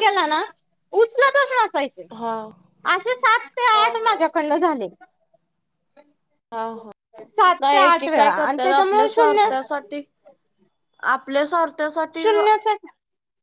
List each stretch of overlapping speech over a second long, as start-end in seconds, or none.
7.6-9.5